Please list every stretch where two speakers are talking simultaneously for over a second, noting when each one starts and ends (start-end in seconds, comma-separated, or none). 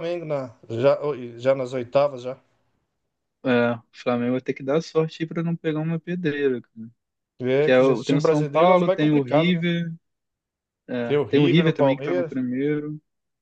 7.6-9.6, 11.0-12.4